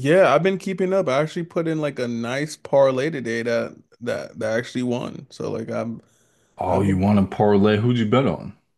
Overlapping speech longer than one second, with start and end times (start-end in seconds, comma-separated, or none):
none